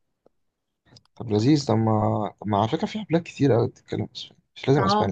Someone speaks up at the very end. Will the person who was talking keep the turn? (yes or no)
no